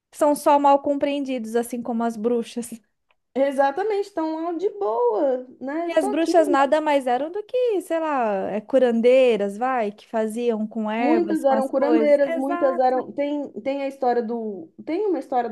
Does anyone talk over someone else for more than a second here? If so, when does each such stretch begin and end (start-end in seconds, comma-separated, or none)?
11.0-13.1